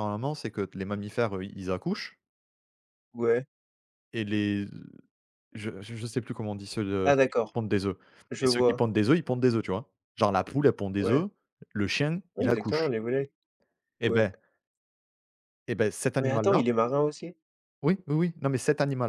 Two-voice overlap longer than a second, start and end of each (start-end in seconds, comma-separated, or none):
none